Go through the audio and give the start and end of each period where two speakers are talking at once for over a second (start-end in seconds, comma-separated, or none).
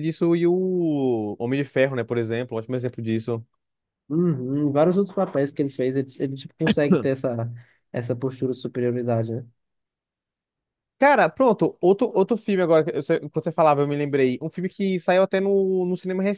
none